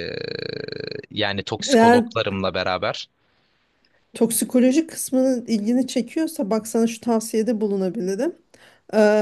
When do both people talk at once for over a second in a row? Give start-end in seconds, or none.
none